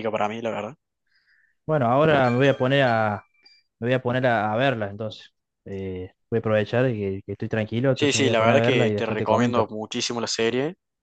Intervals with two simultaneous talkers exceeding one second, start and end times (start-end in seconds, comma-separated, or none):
7.9-9.7